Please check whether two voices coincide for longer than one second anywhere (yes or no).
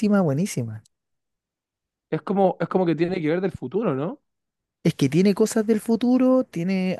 no